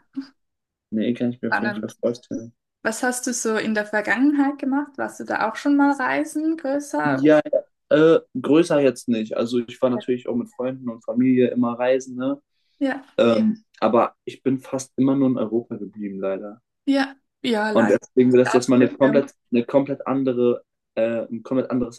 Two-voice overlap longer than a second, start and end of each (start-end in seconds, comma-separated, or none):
17.7-19.3